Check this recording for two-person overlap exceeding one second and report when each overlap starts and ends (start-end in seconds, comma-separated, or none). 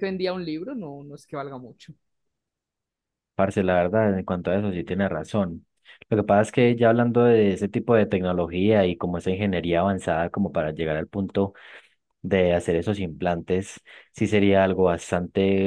none